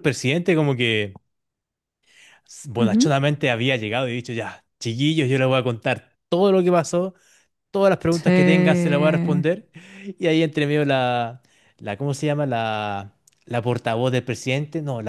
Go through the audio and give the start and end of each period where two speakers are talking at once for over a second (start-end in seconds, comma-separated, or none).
8.1-9.4